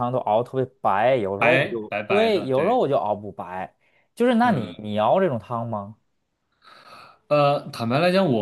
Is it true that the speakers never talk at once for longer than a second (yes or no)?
no